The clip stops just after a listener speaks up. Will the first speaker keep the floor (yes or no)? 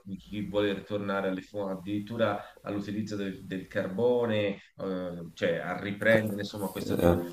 yes